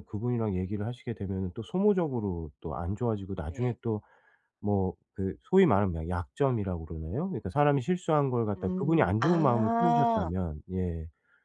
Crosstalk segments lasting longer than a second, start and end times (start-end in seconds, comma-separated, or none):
8.6-10.3